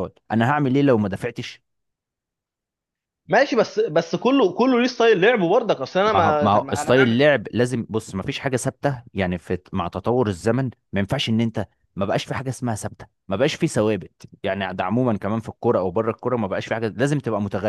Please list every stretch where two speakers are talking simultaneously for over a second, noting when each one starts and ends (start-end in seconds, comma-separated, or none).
6.0-7.4